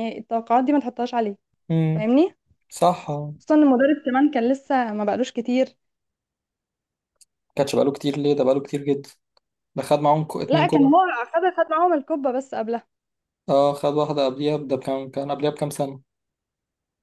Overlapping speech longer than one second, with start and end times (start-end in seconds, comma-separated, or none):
none